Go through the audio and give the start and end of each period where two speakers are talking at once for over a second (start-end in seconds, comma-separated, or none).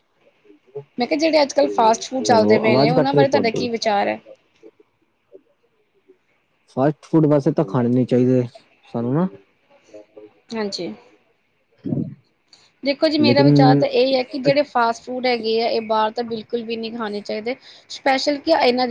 2.3-3.6